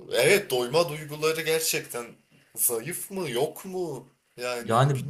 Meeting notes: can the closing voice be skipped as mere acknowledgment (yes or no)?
no